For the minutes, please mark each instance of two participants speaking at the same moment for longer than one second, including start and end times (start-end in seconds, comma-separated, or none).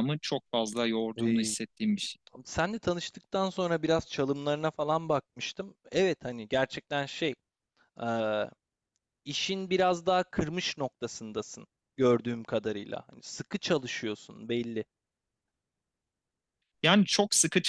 none